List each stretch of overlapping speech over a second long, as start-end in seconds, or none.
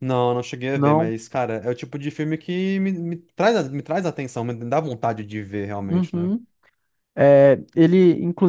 none